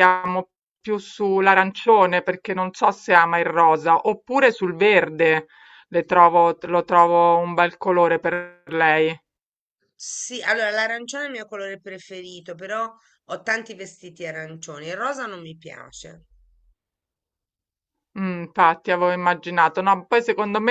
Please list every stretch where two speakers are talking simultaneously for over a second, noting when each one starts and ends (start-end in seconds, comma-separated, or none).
none